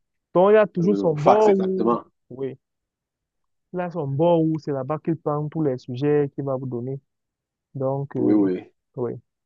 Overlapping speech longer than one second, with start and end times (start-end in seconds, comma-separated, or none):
0.8-2.0